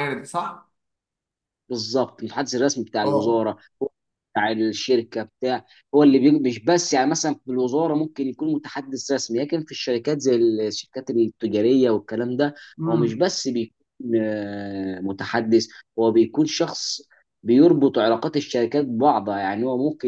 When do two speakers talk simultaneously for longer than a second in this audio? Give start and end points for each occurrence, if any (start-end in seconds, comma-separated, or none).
none